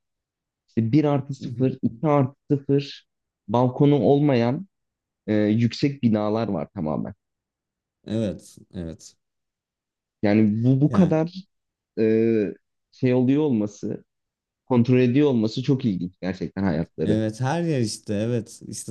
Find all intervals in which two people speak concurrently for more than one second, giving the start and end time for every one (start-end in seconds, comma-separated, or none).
none